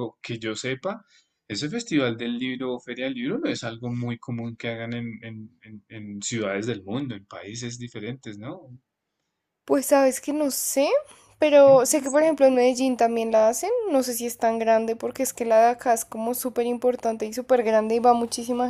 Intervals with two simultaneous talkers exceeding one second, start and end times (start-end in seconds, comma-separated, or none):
none